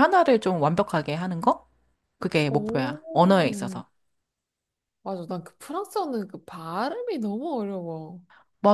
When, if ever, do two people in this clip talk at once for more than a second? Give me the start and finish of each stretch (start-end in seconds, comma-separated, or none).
none